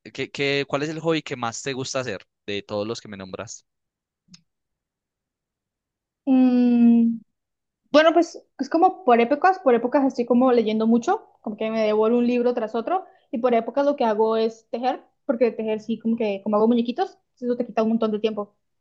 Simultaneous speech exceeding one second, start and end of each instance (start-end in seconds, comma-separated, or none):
none